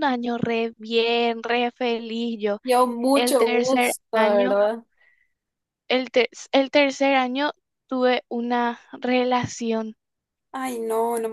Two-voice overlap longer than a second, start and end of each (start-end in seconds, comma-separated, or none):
3.1-4.6